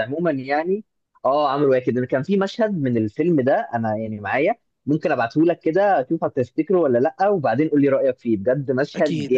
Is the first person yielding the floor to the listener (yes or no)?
yes